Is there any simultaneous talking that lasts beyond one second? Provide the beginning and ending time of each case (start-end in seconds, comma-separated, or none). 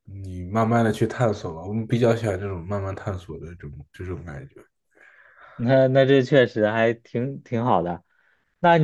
none